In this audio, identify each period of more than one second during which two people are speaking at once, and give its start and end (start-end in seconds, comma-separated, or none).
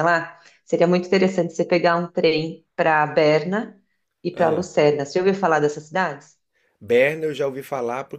none